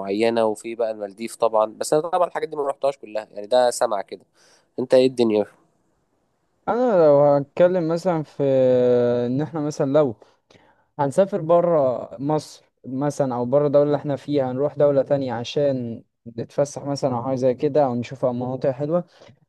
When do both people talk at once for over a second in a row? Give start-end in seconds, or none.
none